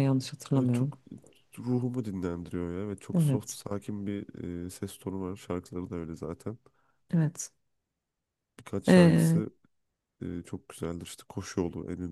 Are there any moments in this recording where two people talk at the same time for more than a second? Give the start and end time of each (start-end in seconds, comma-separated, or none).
none